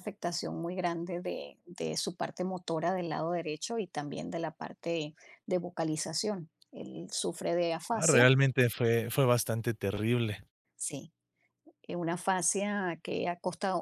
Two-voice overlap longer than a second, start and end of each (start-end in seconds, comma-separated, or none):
none